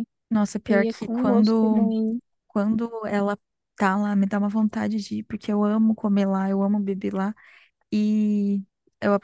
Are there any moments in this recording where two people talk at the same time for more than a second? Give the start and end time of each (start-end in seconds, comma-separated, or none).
0.7-1.9